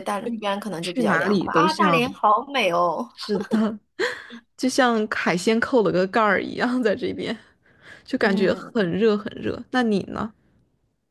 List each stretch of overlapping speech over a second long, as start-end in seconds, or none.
0.8-2.2